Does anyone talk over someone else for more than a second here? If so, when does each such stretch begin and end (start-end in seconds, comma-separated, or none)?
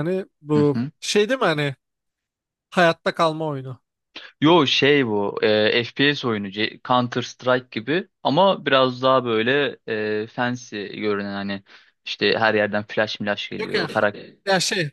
none